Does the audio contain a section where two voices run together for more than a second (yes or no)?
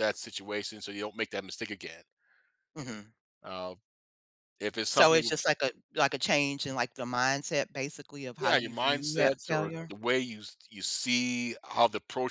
yes